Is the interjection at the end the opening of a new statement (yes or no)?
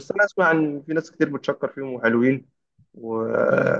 no